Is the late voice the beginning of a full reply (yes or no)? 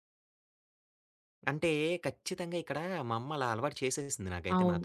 yes